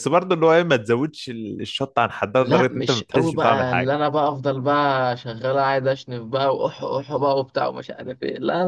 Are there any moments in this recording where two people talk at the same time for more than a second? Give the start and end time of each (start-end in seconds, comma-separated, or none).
2.4-3.9